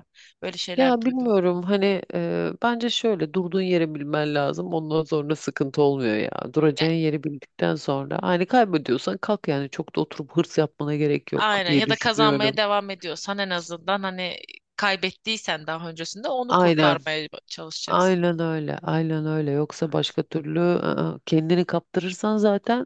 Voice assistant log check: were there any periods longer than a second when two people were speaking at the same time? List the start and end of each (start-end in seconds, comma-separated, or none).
11.3-12.6